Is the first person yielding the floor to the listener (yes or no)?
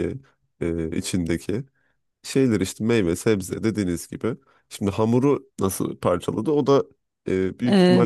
yes